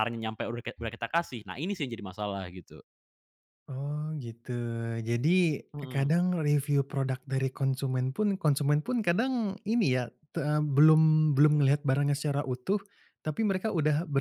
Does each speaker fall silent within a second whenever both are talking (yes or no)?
yes